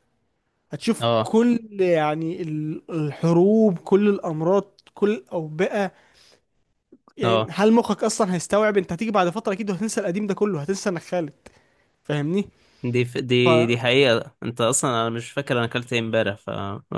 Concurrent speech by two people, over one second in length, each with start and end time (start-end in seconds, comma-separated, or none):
none